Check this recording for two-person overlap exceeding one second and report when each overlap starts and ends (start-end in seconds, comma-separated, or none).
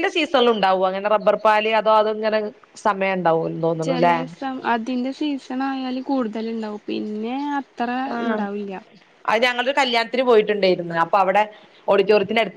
none